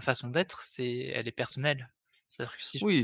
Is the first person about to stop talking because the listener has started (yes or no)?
yes